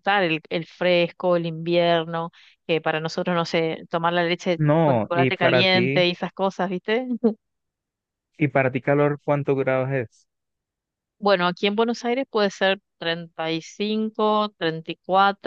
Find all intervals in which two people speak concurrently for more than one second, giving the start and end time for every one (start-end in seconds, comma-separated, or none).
4.6-6.0